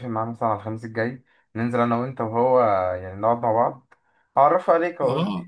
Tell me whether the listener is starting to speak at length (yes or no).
yes